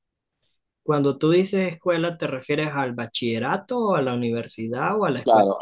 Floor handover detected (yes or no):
yes